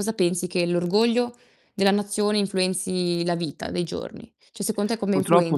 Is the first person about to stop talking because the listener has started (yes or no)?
yes